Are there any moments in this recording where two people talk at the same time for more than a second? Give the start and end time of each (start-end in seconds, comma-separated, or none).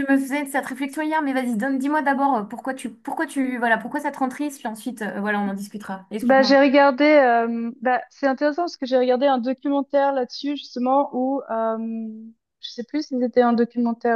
none